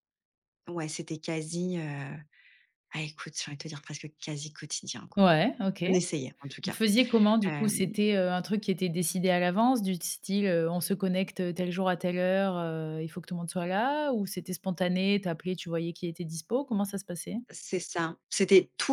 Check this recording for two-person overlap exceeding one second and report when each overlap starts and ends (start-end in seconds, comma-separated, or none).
none